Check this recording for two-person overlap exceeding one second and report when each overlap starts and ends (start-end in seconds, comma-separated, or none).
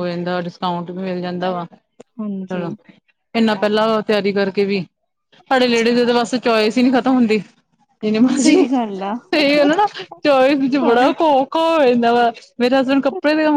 none